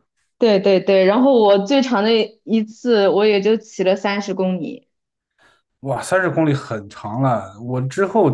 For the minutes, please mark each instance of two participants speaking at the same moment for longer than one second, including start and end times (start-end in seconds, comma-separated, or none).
none